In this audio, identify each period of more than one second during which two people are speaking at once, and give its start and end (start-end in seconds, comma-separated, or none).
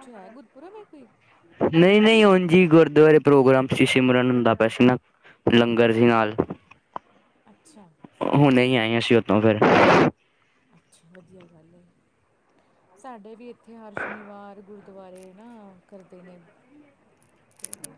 none